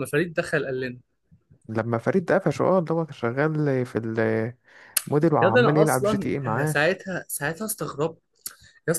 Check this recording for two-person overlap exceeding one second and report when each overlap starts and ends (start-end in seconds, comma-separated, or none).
5.4-6.8